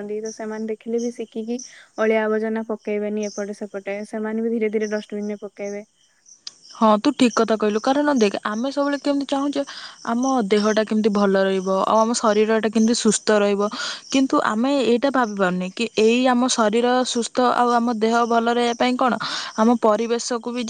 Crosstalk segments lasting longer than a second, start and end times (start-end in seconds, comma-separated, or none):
none